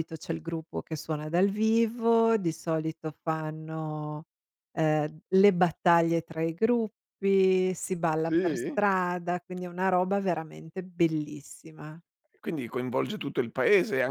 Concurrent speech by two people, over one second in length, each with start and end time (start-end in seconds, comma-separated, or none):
none